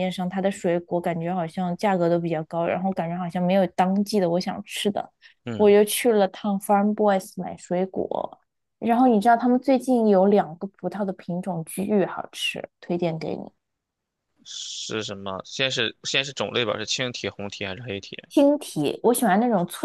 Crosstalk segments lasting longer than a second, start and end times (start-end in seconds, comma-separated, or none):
none